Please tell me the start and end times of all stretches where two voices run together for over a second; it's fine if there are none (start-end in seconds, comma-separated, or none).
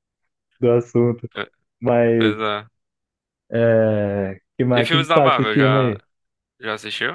4.7-6.0